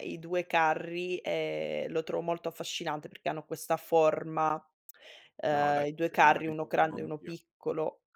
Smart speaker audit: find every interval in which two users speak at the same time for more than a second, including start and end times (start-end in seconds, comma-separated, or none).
5.5-7.3